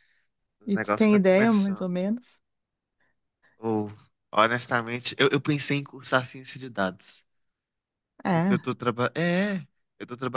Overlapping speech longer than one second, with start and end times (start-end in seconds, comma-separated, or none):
0.7-1.9